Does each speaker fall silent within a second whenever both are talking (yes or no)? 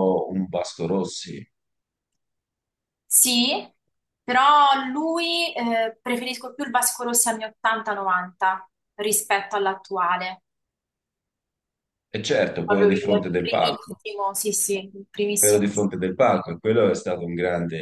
no